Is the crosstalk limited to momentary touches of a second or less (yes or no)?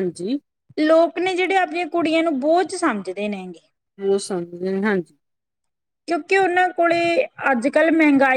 yes